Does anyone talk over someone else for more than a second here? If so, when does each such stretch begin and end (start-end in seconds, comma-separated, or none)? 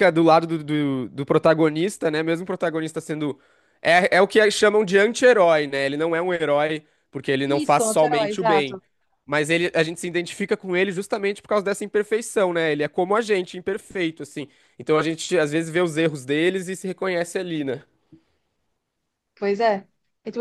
7.4-8.8